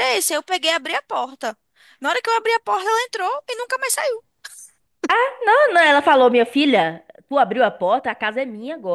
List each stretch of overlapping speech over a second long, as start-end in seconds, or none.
none